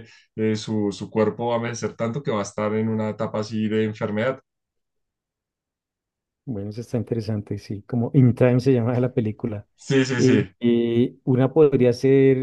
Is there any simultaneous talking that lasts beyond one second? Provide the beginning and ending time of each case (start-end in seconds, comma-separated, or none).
none